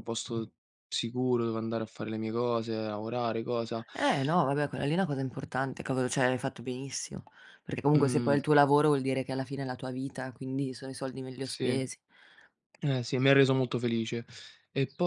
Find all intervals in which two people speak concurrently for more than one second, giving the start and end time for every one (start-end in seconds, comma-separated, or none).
none